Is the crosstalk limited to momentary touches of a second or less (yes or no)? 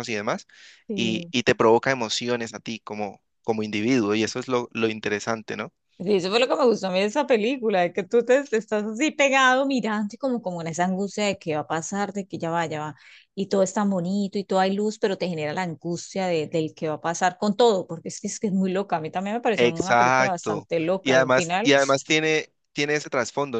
no